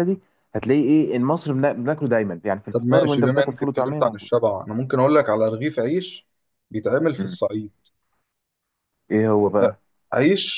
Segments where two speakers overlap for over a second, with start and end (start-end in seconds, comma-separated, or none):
2.7-4.3